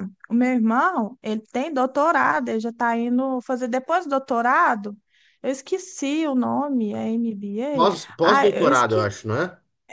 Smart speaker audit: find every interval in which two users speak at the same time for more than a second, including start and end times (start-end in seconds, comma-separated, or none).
7.7-9.1